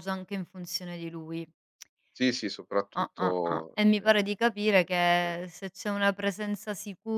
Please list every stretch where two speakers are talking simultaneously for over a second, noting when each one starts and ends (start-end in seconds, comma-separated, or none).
3.0-5.3